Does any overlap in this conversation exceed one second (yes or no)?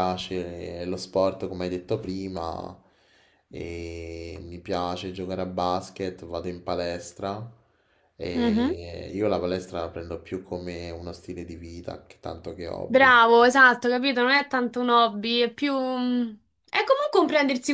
no